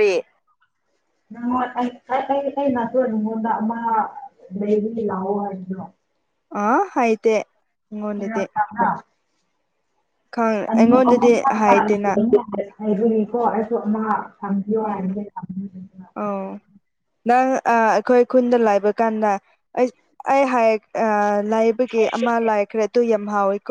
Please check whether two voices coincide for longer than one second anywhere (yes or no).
yes